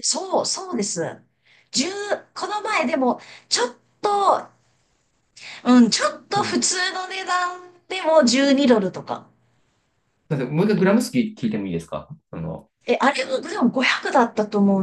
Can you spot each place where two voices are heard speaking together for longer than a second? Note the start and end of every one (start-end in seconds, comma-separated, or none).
none